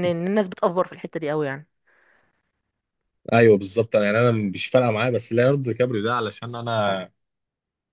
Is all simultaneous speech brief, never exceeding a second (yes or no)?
yes